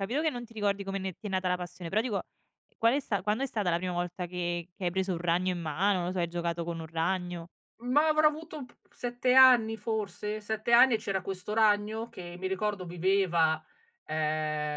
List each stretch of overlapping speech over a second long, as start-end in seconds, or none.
none